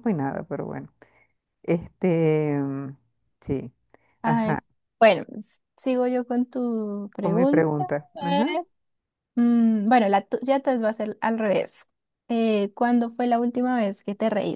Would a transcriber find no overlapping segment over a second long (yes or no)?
no